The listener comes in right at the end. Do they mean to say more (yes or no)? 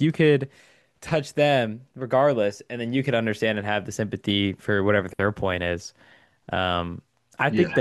no